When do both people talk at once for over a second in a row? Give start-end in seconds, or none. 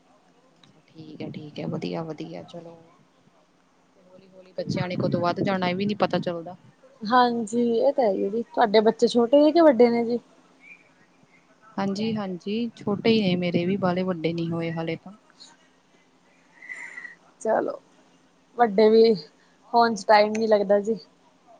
none